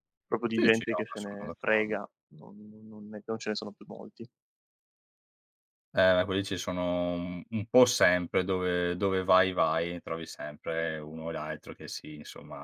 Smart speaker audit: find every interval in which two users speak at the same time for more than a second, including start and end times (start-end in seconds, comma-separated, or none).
0.5-2.0